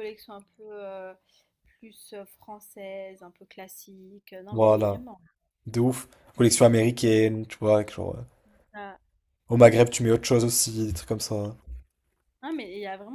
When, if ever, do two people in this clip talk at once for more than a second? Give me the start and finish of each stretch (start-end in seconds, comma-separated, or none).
none